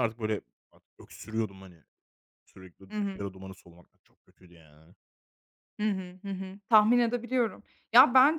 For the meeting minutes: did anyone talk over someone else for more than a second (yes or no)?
no